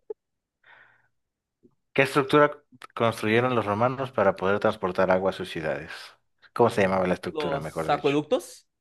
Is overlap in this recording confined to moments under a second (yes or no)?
no